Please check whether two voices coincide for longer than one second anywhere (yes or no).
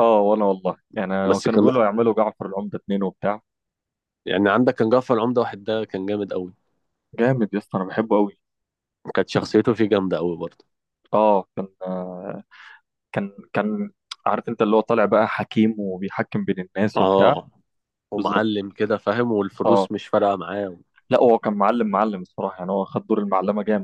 no